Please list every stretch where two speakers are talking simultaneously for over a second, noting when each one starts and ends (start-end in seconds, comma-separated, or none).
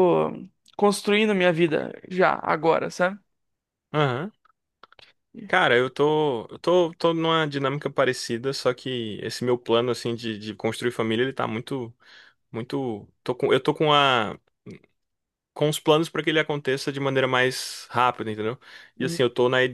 none